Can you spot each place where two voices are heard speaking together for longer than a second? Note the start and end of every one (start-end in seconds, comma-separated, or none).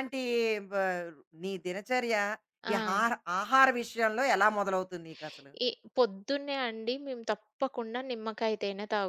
none